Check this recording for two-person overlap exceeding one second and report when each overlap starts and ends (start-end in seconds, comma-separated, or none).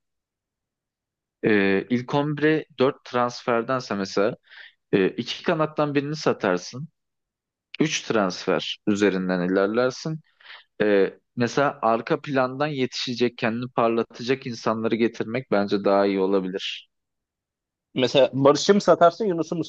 none